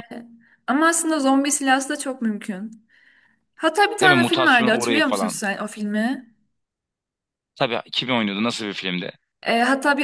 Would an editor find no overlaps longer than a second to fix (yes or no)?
no